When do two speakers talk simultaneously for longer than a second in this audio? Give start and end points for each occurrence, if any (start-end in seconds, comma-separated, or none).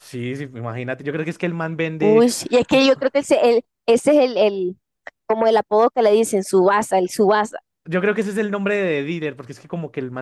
none